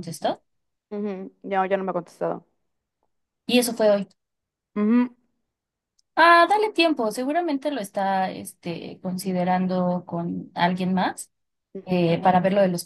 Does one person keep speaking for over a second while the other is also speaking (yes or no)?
no